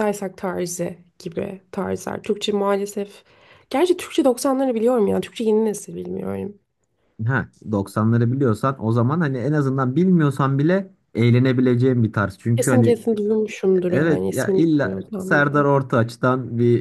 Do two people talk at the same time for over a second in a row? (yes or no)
yes